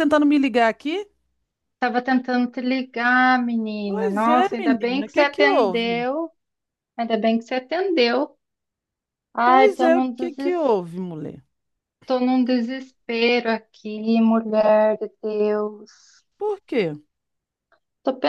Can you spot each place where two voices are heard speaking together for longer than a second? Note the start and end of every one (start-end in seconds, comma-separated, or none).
3.9-6.1, 9.4-10.7